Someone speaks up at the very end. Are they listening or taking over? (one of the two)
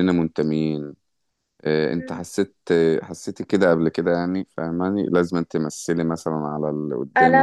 taking over